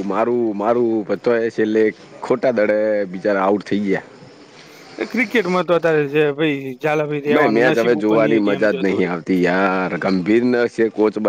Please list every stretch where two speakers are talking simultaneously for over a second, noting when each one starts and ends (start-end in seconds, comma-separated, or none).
7.3-9.1